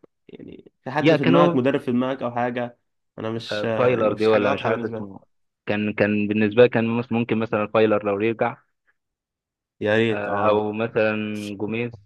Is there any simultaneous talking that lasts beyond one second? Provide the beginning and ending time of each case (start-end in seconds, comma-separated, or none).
3.5-5.1